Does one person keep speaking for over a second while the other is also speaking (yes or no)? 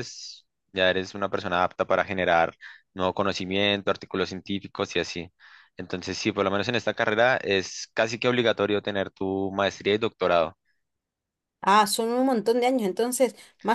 no